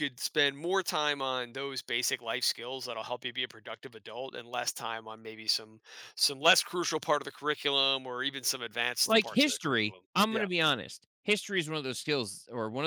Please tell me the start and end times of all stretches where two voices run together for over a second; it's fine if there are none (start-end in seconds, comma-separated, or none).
9.1-10.5